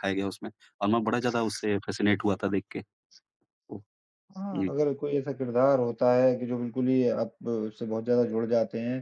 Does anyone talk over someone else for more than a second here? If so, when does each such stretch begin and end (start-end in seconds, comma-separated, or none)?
none